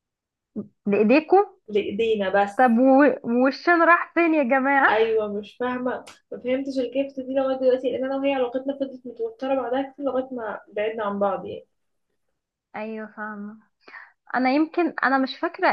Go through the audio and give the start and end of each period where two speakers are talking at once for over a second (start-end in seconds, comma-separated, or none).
none